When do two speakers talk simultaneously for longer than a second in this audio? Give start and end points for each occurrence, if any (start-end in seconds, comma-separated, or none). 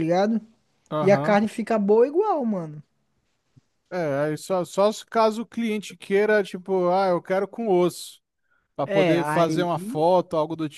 8.8-10.1